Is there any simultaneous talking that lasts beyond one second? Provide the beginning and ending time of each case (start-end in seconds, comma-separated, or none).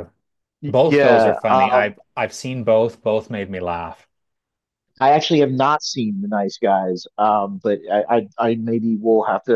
0.7-1.9